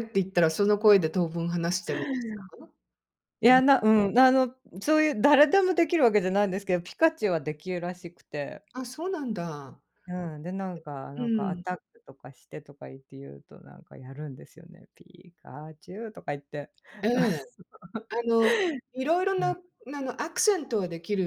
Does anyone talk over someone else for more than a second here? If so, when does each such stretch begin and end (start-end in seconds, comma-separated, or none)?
none